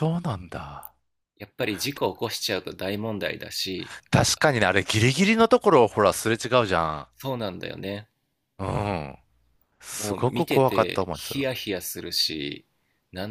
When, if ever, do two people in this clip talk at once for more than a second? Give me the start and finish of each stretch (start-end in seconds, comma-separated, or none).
10.0-11.5